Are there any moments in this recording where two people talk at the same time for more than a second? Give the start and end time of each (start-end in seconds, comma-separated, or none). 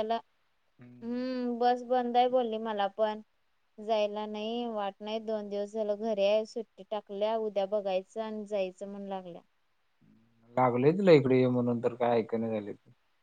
none